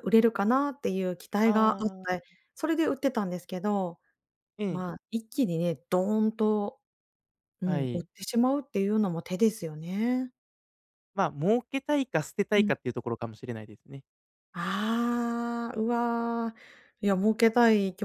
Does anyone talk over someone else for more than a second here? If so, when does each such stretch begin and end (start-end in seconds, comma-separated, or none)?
none